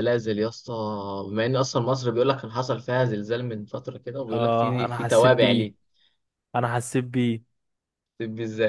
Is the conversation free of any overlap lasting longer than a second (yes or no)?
no